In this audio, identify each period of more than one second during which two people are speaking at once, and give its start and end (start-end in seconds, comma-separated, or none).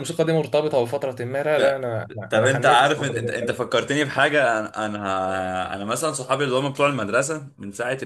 2.3-3.6